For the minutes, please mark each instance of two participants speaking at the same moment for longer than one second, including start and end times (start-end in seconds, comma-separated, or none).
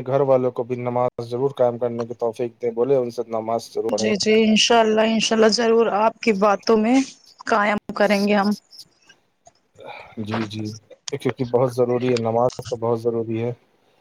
none